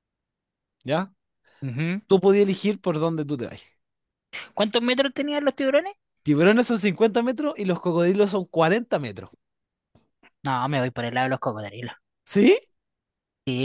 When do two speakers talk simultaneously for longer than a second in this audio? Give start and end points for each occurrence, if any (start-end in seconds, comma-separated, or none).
none